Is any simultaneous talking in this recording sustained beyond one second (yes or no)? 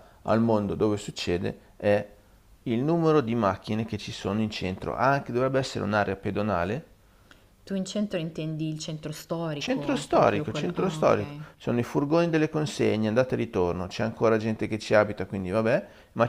yes